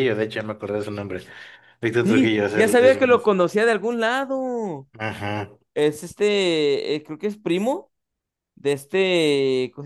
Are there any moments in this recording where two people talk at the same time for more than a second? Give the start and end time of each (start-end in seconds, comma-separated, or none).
2.0-3.3